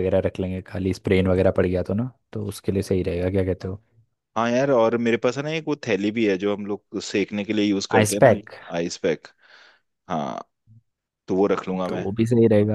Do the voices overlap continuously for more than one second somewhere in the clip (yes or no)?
no